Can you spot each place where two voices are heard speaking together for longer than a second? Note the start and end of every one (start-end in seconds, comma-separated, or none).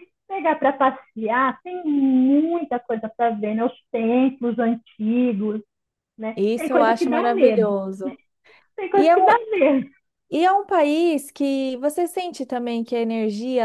6.3-7.7